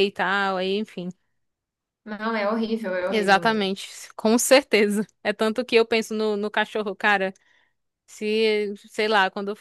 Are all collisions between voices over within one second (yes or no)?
yes